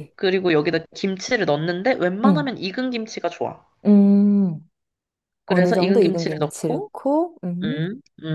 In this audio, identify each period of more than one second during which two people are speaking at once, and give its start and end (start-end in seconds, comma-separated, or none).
5.5-6.9